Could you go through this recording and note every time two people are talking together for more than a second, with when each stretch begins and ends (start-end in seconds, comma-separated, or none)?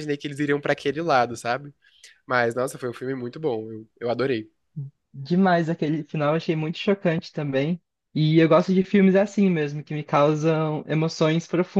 none